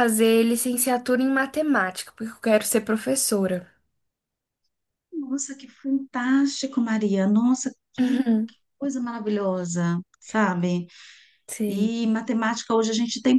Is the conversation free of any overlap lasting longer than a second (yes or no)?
yes